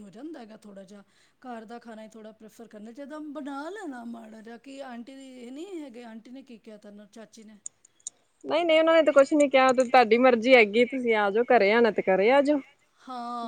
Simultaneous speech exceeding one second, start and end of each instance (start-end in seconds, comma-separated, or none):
none